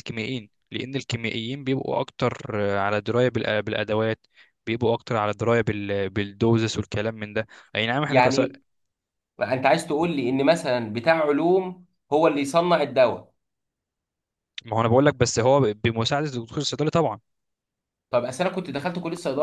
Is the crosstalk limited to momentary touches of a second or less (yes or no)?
yes